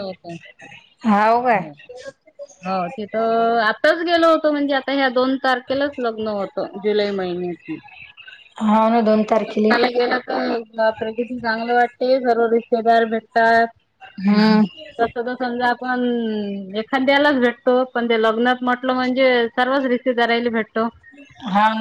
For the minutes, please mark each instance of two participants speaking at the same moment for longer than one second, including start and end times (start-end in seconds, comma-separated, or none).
none